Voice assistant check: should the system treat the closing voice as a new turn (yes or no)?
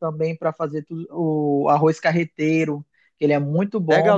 yes